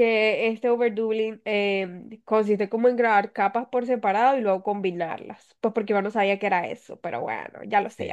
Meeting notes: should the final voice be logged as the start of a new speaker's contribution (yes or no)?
yes